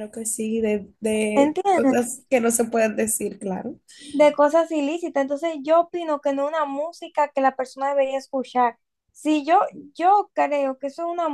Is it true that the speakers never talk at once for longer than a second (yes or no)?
yes